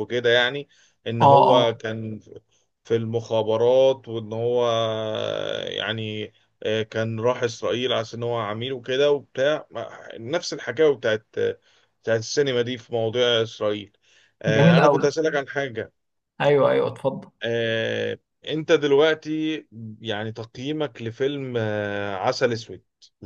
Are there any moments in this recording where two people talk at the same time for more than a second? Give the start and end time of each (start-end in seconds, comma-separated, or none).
none